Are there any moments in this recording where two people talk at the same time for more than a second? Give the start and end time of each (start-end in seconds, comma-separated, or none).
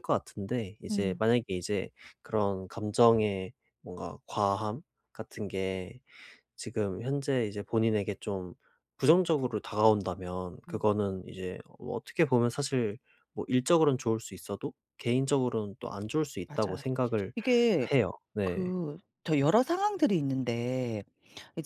none